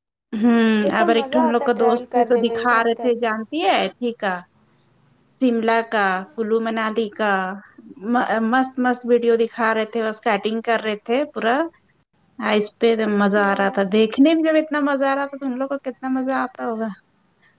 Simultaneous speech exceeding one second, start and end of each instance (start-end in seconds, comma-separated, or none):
1.0-3.1